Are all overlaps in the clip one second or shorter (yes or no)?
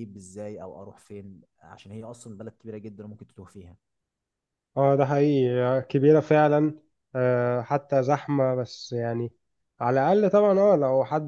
yes